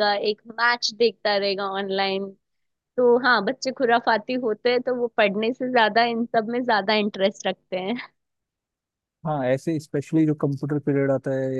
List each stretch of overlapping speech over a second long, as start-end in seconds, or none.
none